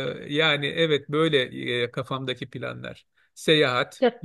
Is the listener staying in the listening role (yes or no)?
yes